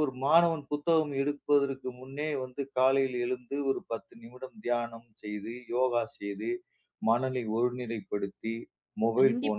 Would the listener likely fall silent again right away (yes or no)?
no